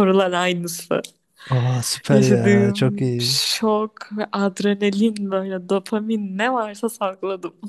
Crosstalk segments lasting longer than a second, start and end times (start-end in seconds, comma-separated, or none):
2.1-3.4